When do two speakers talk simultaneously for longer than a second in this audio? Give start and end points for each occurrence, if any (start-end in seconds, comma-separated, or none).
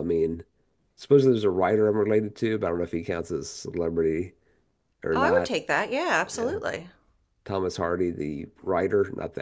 none